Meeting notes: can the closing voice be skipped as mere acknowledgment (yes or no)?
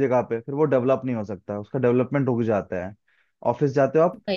yes